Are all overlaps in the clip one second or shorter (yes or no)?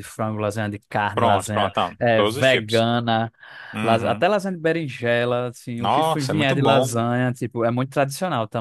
no